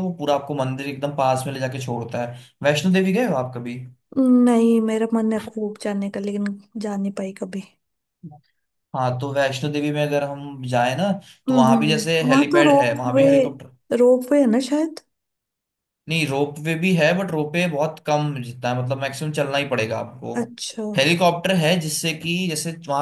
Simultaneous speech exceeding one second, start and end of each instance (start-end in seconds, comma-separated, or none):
11.5-13.3